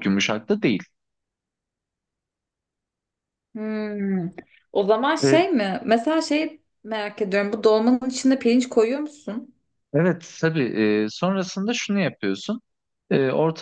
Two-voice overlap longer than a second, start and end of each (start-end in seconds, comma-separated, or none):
none